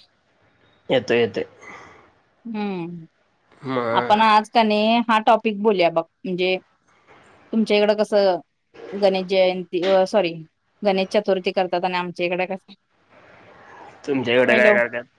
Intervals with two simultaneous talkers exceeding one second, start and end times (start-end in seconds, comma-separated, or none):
none